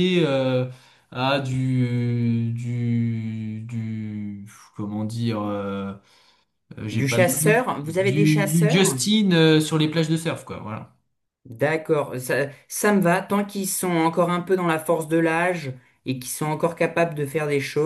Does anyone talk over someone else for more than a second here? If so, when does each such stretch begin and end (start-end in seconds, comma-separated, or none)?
6.9-9.0